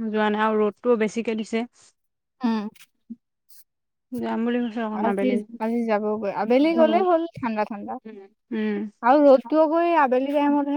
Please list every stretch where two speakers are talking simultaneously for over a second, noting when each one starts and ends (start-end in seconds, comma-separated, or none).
none